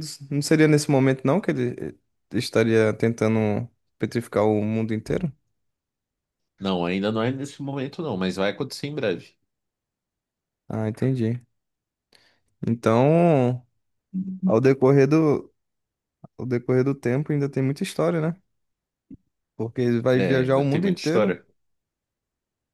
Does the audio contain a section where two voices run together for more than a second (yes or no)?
yes